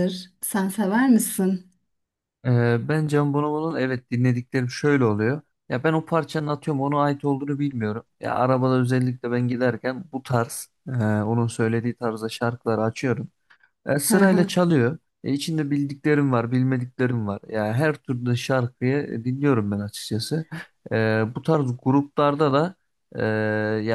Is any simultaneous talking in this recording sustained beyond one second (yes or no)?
no